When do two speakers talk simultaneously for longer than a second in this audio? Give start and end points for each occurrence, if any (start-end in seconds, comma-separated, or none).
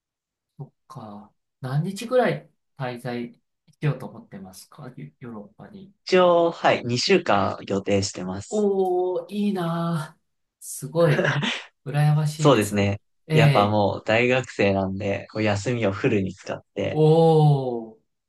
12.4-13.8